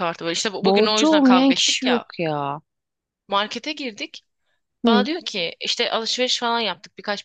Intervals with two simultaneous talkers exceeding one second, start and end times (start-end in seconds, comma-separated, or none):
0.6-2.0